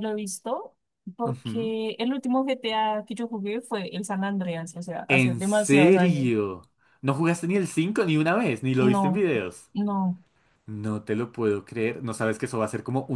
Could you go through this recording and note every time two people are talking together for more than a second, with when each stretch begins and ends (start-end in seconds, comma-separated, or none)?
5.1-6.3